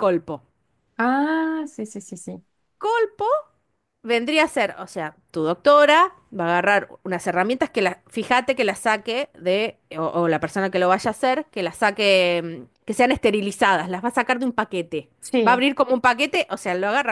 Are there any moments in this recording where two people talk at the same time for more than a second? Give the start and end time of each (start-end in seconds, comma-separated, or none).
none